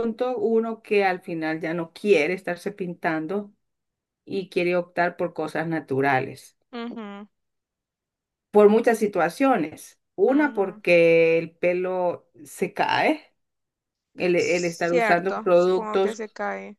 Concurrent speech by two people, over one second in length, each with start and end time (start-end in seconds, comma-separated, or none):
14.4-16.2